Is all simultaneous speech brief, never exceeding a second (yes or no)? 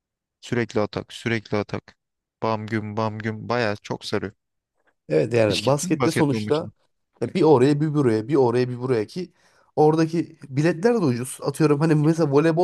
no